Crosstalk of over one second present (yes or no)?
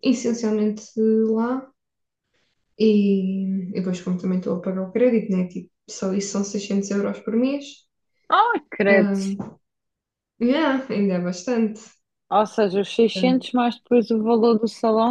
no